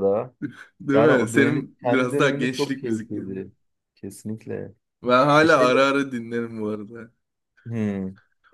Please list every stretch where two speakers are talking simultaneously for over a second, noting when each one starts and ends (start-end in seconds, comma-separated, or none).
0.9-3.5